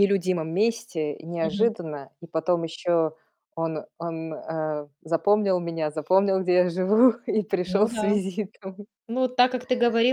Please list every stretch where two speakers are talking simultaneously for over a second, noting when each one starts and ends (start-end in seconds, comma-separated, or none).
none